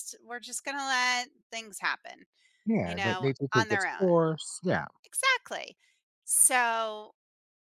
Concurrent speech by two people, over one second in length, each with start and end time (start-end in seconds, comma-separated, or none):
2.8-4.2